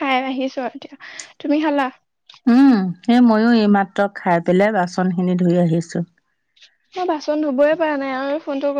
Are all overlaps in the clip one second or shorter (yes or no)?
yes